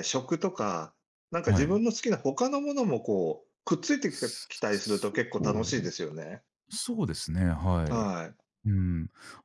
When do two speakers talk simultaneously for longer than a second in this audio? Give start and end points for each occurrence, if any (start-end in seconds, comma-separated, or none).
4.1-5.9